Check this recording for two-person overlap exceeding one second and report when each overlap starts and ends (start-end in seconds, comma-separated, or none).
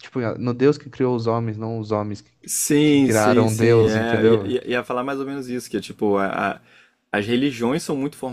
2.8-4.5